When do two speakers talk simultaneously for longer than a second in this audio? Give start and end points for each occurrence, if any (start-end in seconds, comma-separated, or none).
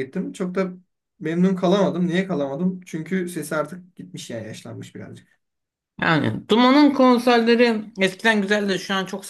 none